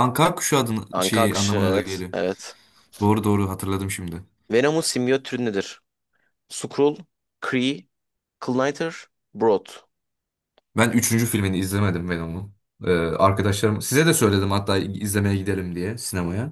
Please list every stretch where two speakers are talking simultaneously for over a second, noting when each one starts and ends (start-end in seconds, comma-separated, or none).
0.9-2.1